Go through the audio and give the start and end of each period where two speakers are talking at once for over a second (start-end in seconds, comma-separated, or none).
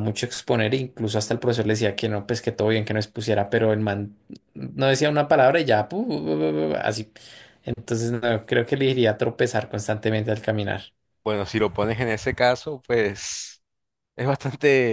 none